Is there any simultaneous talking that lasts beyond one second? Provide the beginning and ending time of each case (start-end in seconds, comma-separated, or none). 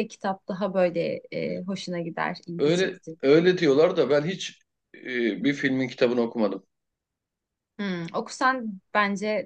none